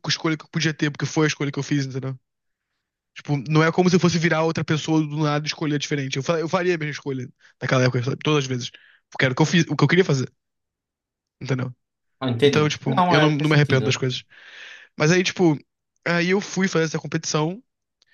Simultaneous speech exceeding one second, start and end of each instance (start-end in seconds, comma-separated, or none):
12.4-14.0